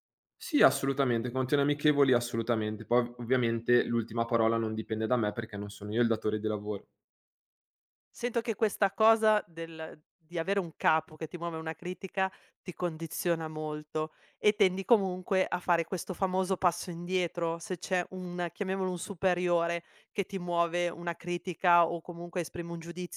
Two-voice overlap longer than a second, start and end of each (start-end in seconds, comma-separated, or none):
none